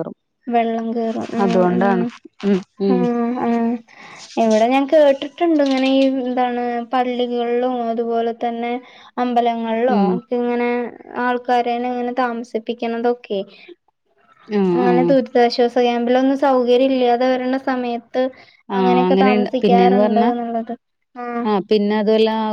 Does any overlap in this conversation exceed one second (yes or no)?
yes